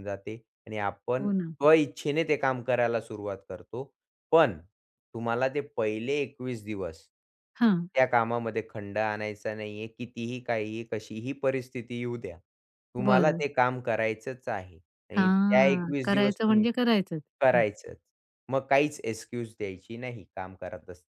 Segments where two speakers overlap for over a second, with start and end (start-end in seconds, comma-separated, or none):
15.2-16.6